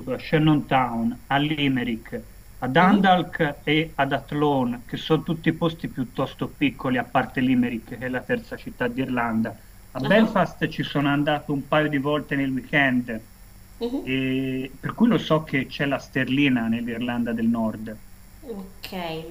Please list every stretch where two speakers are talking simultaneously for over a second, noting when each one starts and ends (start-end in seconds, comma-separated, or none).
none